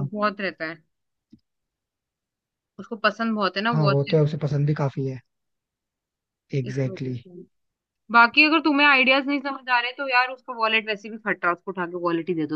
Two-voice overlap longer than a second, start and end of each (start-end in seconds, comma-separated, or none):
none